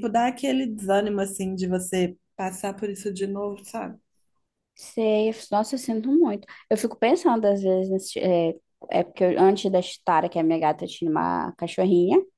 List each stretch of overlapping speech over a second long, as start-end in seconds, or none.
none